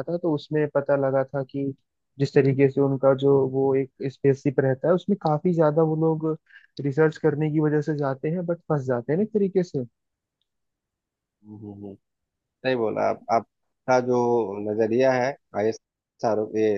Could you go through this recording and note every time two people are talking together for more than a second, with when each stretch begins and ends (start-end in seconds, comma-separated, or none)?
none